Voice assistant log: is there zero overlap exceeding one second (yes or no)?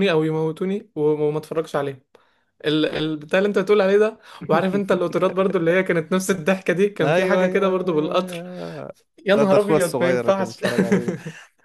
no